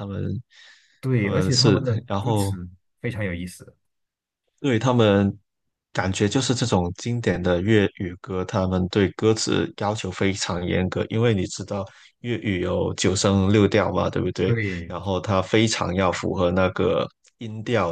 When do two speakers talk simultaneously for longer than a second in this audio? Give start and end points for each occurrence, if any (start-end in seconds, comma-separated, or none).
1.1-2.5